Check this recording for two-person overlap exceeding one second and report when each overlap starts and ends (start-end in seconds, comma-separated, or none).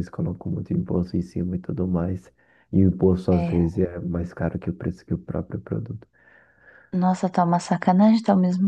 none